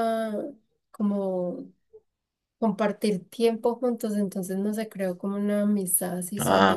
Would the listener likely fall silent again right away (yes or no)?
no